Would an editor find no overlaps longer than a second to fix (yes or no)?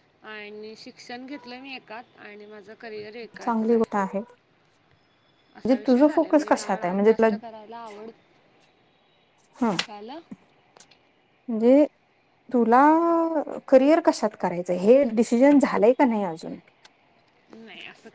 no